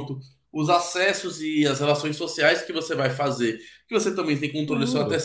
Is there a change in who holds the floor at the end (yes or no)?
no